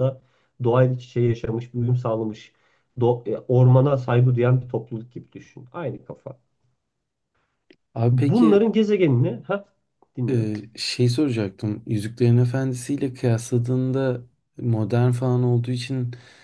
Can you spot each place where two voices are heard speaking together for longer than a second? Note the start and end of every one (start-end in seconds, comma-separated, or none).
none